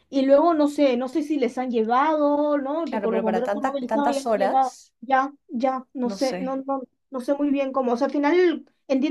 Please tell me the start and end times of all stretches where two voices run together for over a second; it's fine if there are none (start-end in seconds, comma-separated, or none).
2.9-4.7